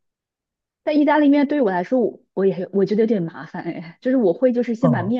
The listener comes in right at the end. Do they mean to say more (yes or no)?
no